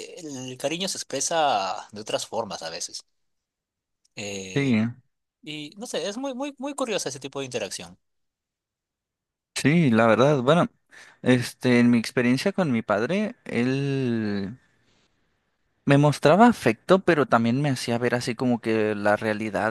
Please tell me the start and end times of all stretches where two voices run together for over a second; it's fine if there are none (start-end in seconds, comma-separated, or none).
none